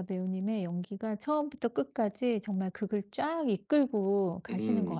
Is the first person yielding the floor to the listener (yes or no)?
yes